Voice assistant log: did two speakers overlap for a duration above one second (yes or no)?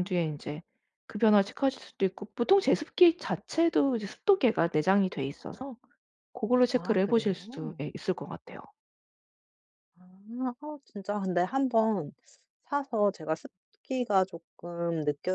yes